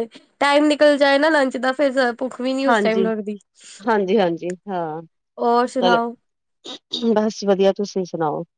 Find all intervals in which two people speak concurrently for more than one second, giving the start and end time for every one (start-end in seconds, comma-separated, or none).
none